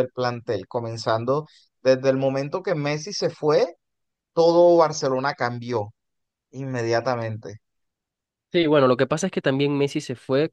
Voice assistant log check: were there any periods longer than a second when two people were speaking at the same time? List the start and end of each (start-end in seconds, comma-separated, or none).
none